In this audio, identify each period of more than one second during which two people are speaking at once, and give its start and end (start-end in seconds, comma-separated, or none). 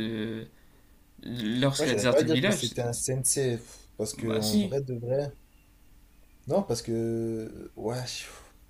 1.8-3.0